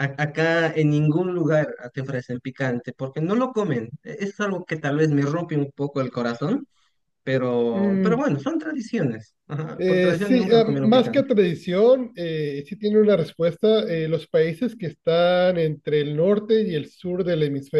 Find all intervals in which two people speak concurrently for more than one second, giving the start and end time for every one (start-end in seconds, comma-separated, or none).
9.8-11.3